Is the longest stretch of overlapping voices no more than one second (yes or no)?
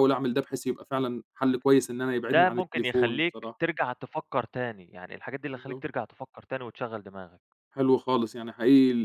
no